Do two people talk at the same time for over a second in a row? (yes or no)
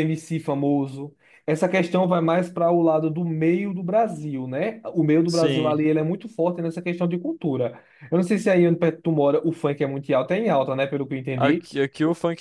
no